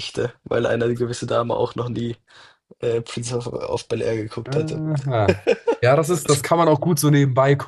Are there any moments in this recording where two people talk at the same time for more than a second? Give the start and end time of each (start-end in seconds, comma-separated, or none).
none